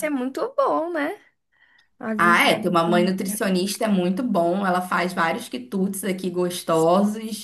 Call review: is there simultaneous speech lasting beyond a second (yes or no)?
yes